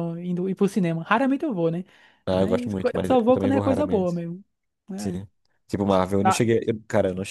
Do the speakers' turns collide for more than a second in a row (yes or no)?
yes